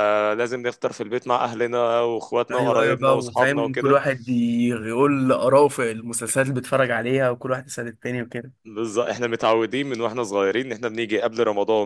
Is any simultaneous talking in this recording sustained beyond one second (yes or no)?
yes